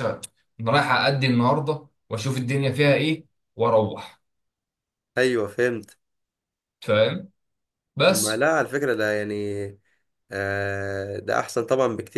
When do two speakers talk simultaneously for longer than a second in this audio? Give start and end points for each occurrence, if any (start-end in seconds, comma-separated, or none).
none